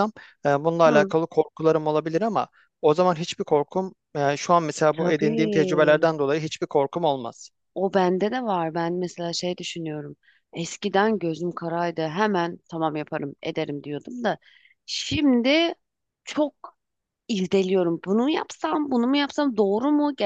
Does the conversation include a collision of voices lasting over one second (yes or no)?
yes